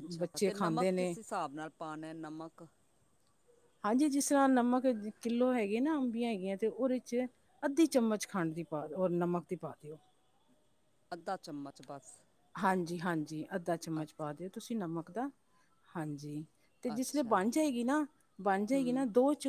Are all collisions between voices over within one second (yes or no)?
yes